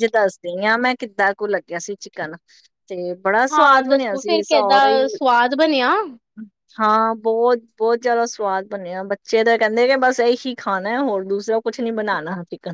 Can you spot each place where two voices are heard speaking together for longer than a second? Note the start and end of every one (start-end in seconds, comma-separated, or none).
3.5-5.0